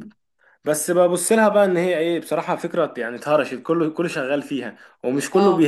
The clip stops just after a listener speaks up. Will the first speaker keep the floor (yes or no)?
yes